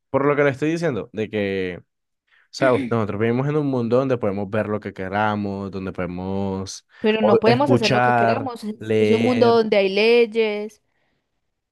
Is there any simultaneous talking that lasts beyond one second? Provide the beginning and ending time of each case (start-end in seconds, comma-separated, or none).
7.0-9.6